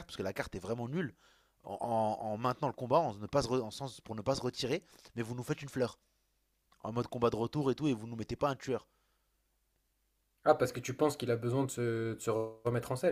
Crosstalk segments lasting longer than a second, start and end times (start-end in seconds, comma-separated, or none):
none